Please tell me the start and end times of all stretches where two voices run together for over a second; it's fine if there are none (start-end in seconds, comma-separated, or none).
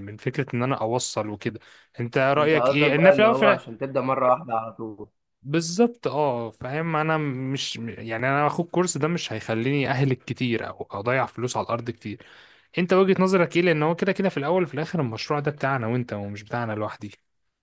2.4-3.8